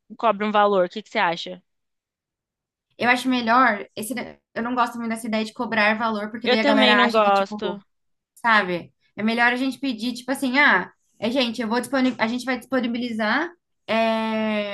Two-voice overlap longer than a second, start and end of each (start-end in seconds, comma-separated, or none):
6.5-7.8